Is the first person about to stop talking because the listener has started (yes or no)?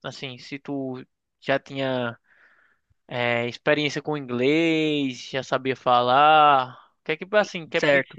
yes